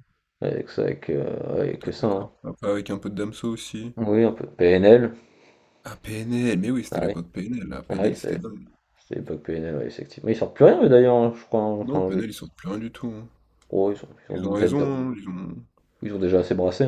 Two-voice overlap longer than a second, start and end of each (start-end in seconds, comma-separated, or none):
none